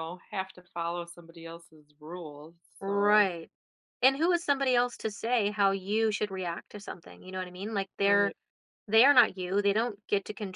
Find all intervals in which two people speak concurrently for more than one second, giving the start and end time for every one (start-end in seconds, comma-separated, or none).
none